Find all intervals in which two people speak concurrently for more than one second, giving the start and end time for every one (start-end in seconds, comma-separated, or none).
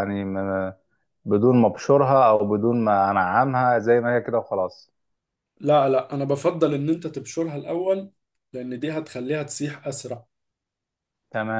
none